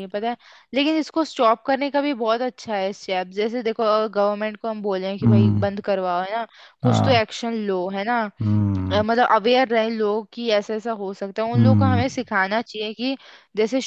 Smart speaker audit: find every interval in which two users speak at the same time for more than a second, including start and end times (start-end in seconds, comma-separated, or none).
none